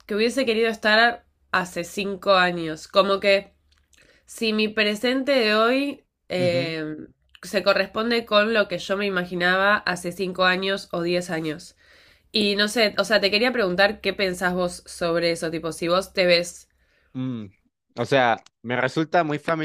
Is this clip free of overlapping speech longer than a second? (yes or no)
yes